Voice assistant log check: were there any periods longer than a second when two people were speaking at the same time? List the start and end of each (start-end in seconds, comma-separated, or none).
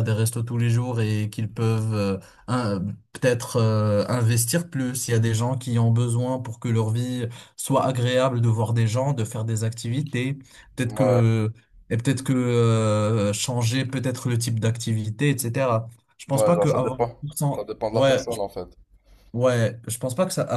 16.3-18.4